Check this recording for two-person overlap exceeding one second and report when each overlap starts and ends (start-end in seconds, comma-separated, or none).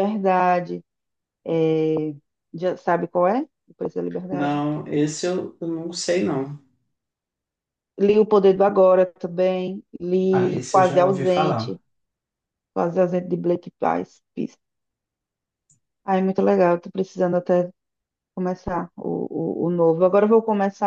10.3-11.8